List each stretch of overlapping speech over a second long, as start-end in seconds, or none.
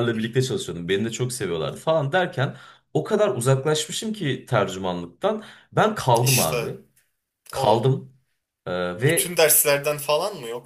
none